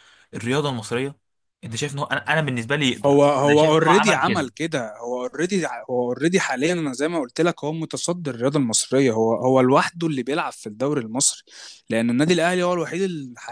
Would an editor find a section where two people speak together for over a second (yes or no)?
yes